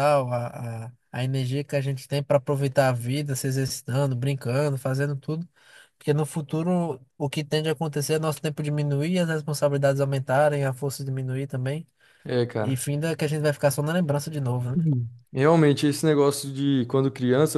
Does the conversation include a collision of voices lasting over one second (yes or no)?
no